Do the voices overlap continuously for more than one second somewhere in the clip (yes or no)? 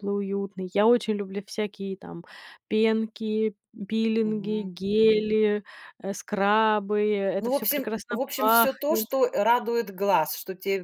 yes